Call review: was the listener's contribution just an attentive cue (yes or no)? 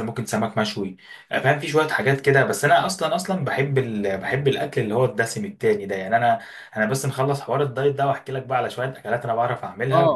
no